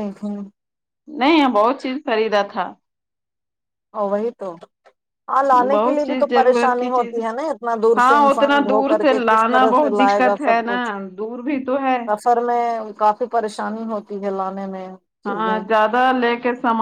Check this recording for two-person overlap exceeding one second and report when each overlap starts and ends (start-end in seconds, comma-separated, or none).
5.7-7.2, 8.0-10.8